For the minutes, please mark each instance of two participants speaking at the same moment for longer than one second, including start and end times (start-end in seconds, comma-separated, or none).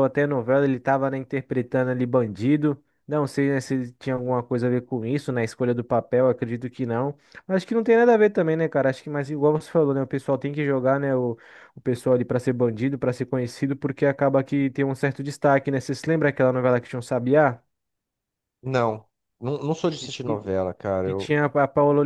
none